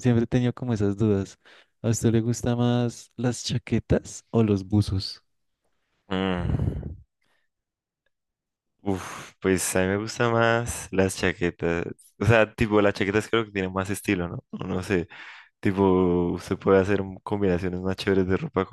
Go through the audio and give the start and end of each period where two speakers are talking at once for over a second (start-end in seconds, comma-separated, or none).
none